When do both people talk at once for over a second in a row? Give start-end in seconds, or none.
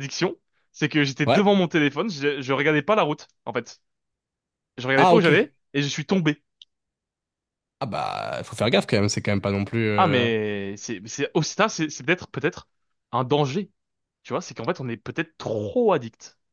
none